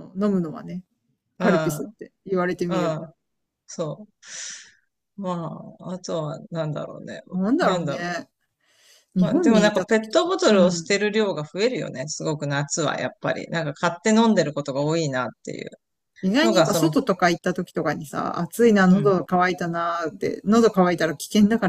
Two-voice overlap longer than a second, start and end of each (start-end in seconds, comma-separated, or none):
9.2-10.9